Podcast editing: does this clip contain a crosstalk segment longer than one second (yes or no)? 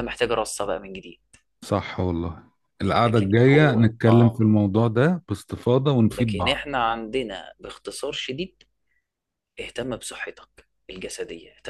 yes